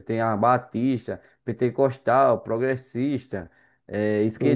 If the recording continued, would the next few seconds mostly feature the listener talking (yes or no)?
yes